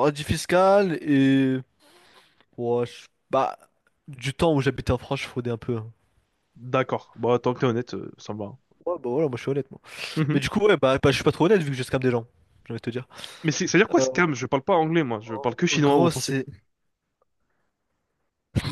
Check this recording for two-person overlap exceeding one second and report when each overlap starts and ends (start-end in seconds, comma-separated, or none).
15.1-16.3